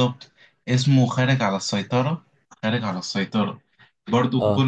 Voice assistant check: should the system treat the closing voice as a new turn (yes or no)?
no